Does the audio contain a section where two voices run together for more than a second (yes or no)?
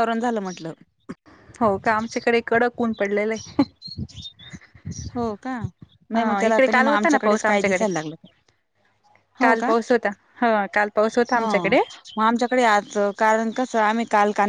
yes